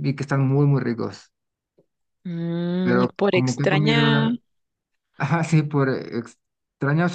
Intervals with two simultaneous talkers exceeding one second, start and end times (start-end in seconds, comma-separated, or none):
2.8-4.3